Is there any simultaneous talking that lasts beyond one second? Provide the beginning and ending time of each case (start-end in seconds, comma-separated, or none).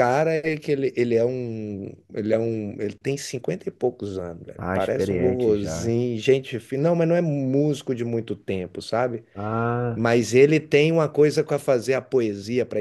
4.6-5.9